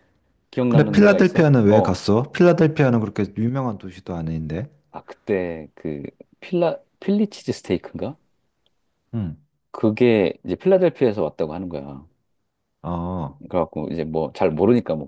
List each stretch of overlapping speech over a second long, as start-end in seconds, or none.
0.7-2.0